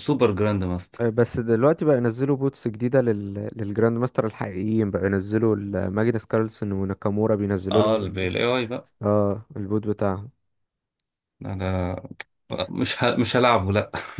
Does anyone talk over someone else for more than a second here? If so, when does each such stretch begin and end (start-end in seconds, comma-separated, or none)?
none